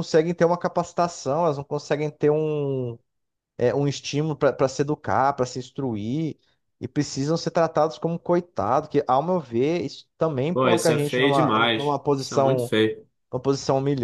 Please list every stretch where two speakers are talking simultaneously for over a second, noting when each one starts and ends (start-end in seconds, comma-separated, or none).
10.5-12.7